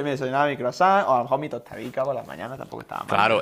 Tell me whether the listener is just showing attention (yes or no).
no